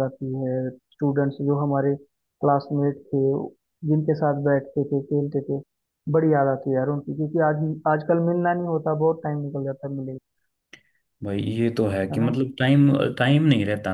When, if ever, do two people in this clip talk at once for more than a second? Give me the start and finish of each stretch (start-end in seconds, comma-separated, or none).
none